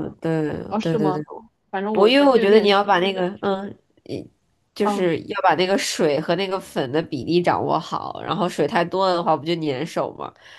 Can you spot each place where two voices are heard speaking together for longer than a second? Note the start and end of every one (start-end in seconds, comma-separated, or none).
1.9-3.4